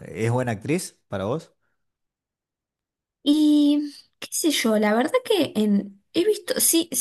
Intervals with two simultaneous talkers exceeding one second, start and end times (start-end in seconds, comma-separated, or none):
none